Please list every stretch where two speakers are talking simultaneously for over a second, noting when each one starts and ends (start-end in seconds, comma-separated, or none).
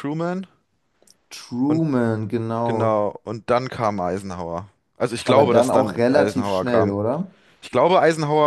5.2-7.0